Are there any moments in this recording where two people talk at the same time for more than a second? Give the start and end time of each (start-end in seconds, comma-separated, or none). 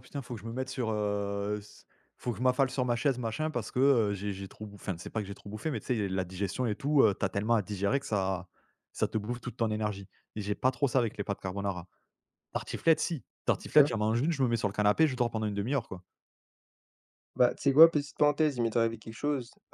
none